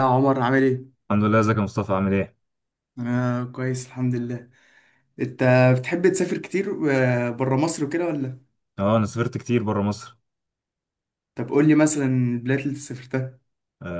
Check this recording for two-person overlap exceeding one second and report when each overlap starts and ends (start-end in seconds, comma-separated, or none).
none